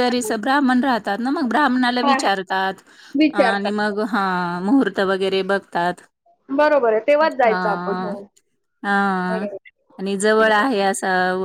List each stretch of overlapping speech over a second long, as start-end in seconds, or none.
none